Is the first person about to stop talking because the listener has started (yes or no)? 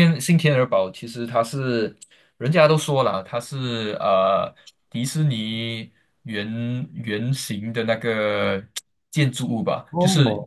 no